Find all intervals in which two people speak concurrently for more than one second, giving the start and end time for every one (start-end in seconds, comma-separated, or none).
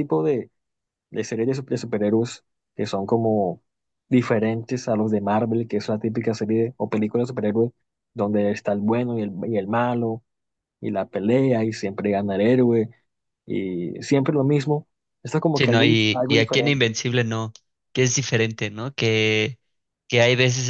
15.5-16.9